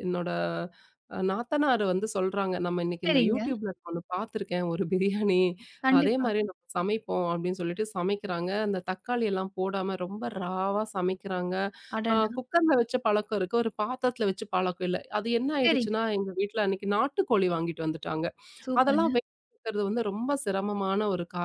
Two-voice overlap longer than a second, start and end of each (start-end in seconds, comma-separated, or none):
none